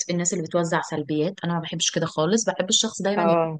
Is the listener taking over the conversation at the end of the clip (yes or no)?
no